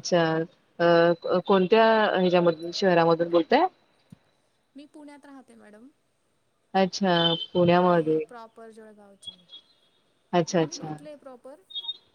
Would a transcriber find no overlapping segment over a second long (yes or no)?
yes